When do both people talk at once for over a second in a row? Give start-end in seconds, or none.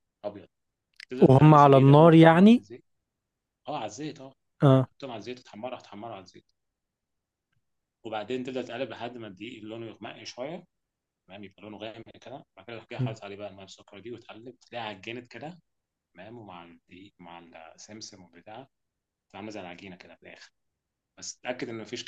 1.2-2.6